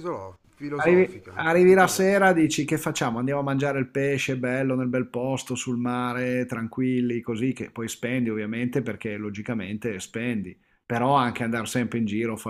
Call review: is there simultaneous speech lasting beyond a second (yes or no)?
yes